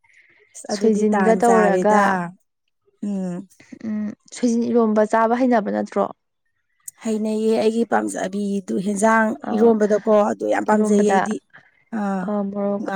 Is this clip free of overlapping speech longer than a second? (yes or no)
no